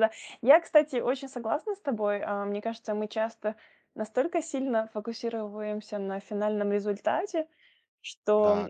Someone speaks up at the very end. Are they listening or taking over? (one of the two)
listening